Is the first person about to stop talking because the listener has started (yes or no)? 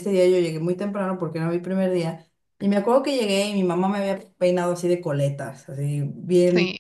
no